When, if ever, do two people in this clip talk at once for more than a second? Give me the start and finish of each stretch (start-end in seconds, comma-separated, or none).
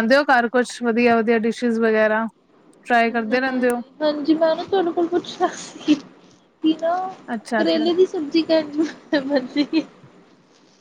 none